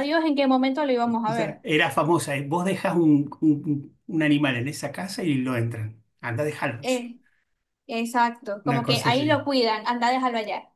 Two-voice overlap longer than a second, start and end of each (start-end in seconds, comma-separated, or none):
none